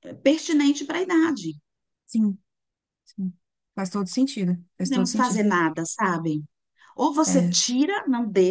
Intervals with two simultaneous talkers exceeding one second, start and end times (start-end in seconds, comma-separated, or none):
none